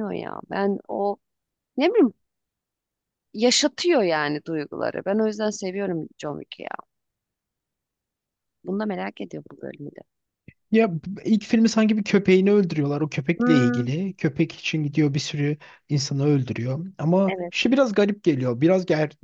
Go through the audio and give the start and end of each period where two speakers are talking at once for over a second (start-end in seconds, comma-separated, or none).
none